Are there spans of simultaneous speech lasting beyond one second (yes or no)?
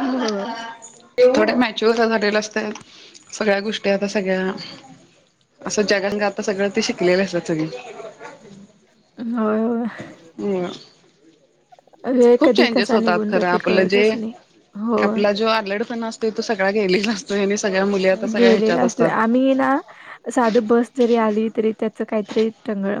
yes